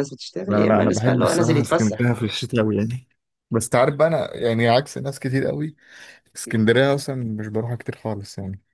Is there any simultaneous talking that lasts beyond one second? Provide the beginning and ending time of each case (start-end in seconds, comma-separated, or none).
0.5-2.1